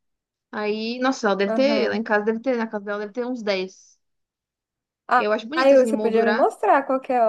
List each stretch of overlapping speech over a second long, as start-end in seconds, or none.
5.2-6.5